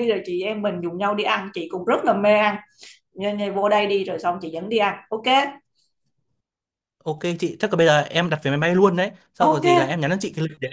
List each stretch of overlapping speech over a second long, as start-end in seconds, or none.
none